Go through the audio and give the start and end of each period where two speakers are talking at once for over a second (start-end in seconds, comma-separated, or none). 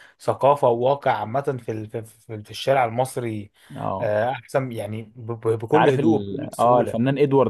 5.6-7.0